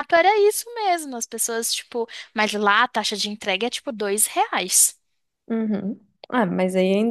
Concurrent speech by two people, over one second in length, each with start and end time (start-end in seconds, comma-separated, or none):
none